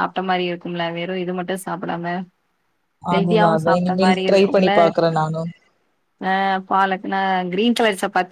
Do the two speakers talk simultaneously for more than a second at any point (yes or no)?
yes